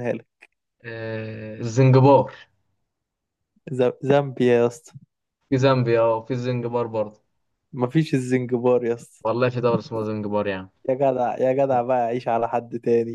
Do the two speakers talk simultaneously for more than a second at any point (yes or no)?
no